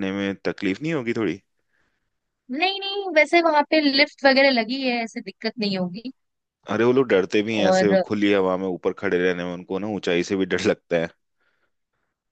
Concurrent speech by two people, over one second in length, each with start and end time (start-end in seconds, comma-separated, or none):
none